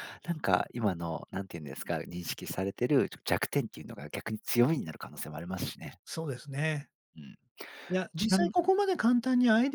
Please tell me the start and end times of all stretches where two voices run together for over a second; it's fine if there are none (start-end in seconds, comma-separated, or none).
none